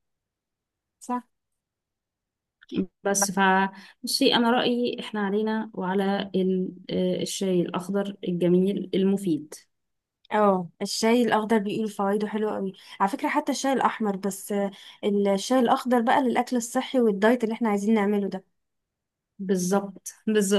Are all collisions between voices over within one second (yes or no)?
yes